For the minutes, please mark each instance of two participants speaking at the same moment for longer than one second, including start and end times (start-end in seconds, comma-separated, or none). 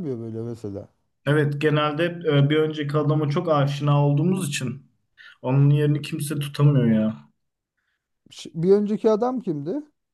none